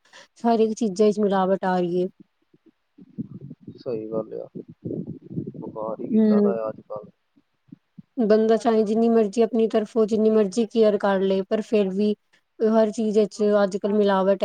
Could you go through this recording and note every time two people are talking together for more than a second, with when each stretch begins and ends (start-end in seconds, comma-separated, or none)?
none